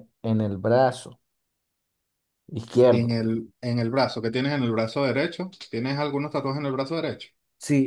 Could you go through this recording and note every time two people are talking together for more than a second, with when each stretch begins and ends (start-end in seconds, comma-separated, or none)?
none